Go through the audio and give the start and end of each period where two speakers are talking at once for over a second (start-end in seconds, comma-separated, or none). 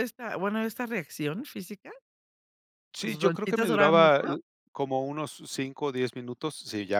3.0-4.4